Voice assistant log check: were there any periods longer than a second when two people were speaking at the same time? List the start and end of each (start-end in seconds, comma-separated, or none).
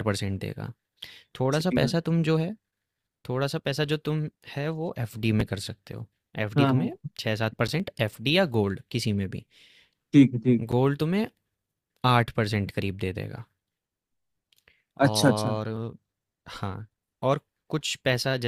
none